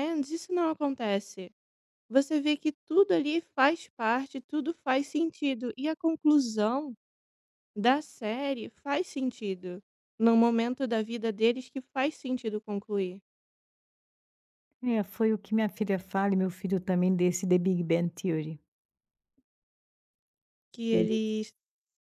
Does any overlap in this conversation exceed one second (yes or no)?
no